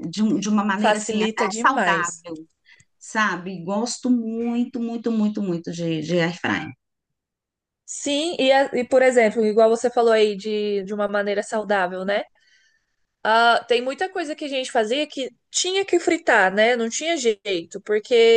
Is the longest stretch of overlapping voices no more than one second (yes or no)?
no